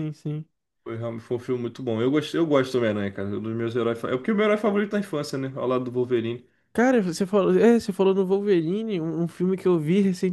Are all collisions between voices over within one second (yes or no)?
yes